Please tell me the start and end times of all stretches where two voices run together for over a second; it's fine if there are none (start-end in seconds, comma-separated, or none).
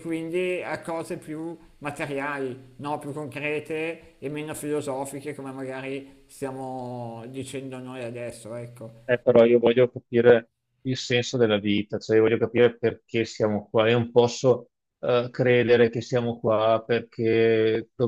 none